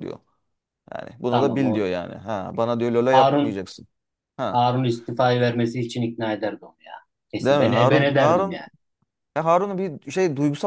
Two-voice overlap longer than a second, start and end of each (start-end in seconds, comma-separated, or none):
7.4-8.6